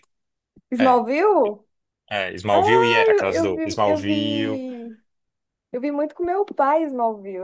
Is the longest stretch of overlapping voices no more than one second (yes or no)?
no